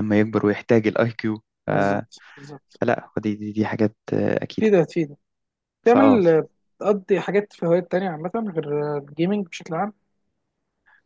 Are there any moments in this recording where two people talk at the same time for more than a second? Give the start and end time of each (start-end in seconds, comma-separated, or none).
none